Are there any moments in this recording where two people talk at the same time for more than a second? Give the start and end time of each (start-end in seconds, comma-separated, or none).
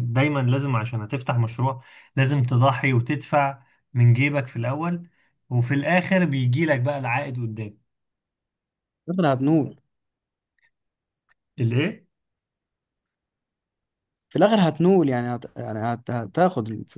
none